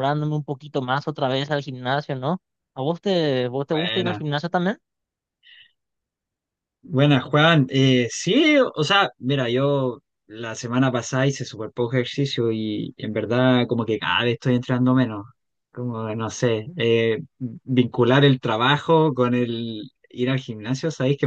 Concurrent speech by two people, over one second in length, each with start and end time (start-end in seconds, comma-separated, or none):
none